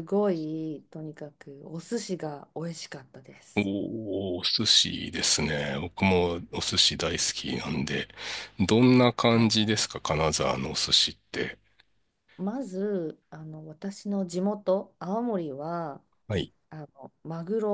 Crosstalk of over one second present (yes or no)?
no